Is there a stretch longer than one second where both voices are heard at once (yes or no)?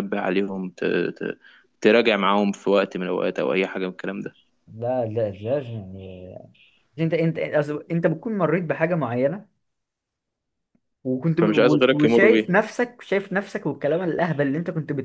yes